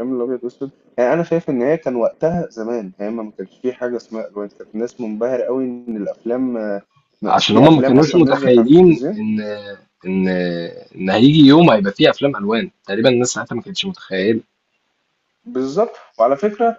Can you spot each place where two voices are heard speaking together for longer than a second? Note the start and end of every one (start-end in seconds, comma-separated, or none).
7.5-9.2